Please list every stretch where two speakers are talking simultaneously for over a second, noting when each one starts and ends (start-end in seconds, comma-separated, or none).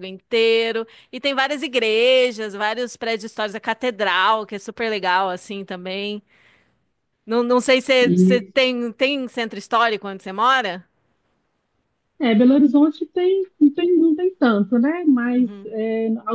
none